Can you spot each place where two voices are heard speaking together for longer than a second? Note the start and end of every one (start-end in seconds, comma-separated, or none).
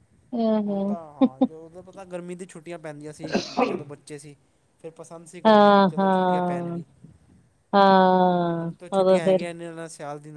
5.5-6.8, 8.0-9.4